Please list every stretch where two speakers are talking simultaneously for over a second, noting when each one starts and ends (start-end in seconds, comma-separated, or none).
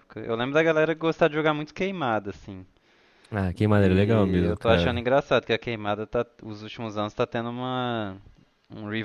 3.7-5.0